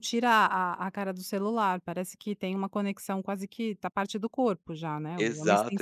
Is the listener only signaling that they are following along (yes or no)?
no